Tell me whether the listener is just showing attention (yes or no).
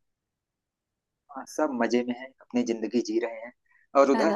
no